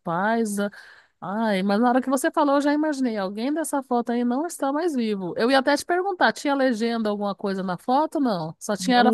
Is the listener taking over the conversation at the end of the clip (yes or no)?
yes